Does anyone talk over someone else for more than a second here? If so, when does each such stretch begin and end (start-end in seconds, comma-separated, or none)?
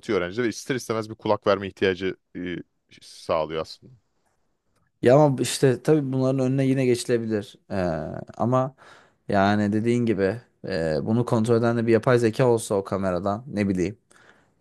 none